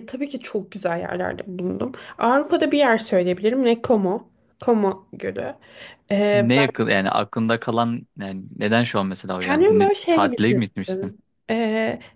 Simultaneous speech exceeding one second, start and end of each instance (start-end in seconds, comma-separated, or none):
9.4-11.1